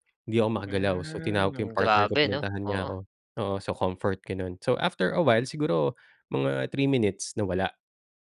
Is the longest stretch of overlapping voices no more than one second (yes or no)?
no